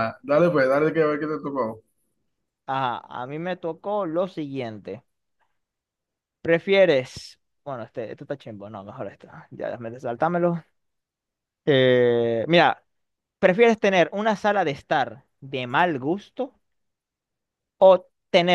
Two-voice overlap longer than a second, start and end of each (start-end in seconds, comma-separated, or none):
none